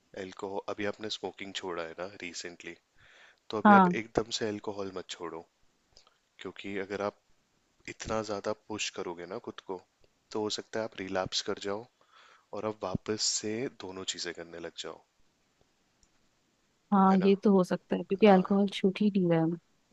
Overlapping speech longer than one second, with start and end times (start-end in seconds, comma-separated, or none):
none